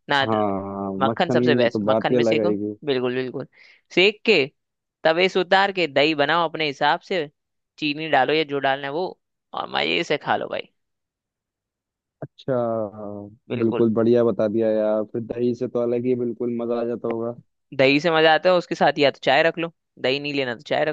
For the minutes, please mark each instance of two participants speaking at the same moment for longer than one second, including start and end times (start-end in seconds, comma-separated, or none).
1.1-2.8